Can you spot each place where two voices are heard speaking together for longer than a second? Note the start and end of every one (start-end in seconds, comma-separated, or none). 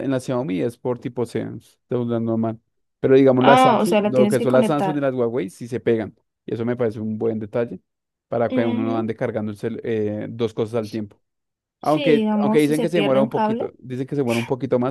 3.4-5.0, 11.8-13.7